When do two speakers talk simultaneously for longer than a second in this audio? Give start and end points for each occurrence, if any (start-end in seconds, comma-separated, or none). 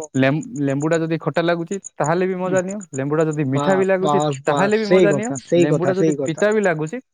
3.5-6.4